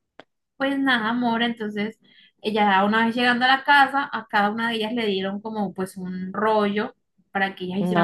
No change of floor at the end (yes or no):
yes